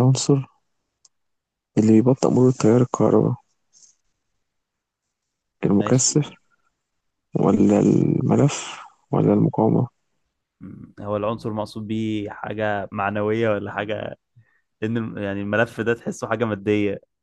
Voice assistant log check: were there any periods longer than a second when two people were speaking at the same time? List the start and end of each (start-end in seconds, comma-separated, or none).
none